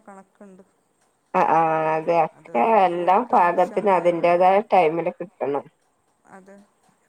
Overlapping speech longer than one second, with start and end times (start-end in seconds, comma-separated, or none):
2.4-4.5